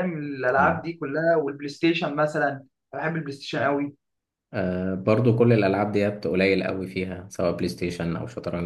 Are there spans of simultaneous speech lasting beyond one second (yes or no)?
no